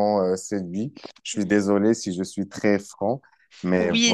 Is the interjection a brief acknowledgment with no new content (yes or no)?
no